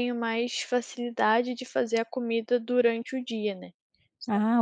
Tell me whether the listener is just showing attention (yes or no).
no